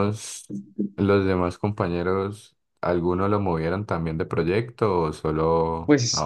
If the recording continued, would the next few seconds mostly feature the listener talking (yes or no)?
yes